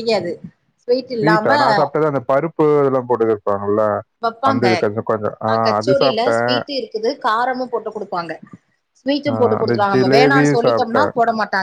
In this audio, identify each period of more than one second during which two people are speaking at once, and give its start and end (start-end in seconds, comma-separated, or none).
9.3-11.1